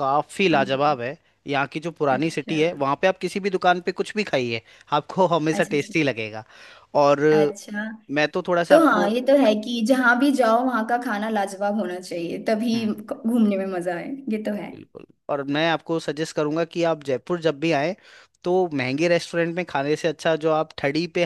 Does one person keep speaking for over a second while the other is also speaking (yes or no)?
no